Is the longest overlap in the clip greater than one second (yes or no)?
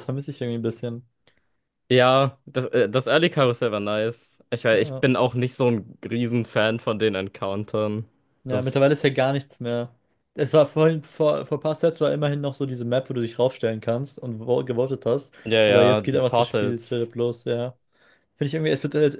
yes